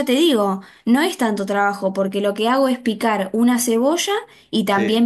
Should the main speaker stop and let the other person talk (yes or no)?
no